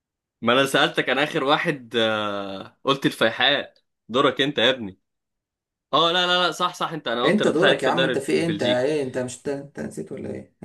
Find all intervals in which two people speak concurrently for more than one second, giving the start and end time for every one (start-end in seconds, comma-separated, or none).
7.2-8.8